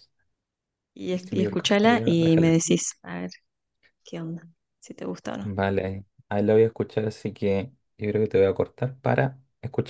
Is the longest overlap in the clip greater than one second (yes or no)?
yes